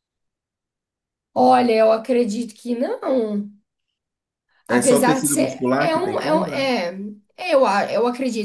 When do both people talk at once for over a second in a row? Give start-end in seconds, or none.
4.7-6.7